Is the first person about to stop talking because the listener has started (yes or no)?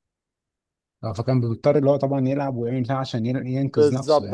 yes